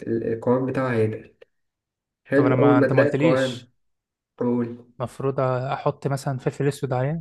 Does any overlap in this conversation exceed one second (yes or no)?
yes